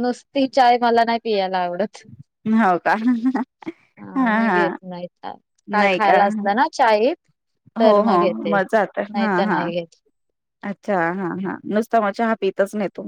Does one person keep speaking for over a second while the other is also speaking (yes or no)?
no